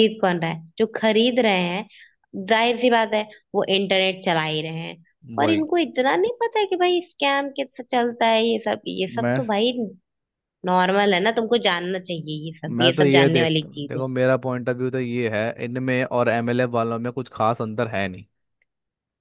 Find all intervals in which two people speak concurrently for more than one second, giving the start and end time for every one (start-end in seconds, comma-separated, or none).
12.7-14.0